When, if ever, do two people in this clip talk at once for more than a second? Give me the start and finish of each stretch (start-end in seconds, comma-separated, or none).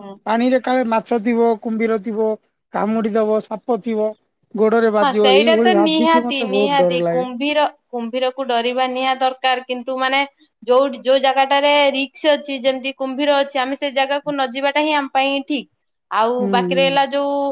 5.0-7.0